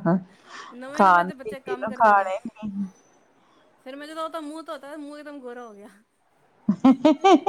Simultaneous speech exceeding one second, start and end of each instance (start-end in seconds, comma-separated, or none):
0.9-2.3